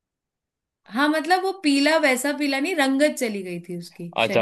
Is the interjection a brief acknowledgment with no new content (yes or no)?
no